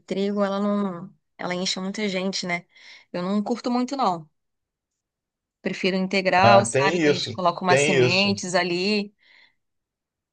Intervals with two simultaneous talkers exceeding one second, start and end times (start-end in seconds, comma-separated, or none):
6.4-8.4